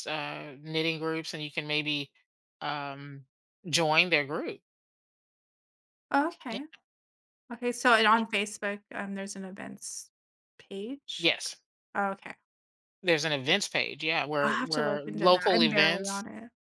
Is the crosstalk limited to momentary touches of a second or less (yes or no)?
no